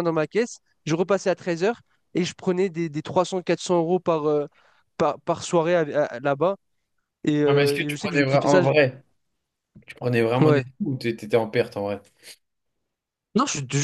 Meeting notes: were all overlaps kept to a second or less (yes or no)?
no